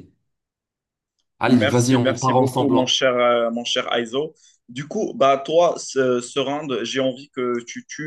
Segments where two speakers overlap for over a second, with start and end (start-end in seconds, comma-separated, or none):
1.5-3.0